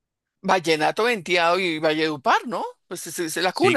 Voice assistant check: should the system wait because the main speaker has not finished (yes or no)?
no